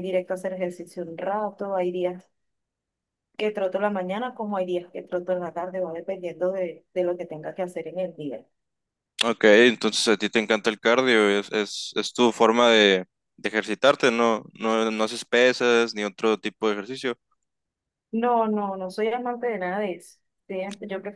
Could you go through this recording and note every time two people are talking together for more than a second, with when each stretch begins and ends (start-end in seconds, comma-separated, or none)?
none